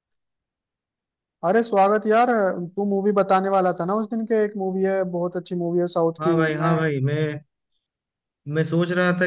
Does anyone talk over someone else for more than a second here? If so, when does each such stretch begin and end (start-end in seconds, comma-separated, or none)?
none